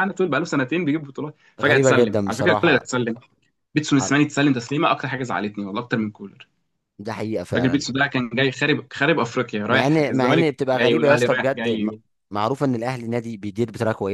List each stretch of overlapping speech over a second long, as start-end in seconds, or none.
1.6-2.9, 9.7-11.9